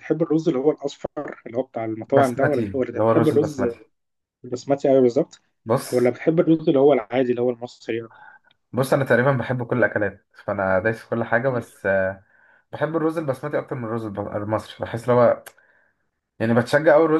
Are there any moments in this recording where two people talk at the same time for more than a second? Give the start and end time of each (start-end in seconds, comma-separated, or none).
2.1-3.6